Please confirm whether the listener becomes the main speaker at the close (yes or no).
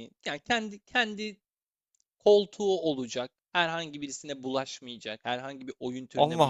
no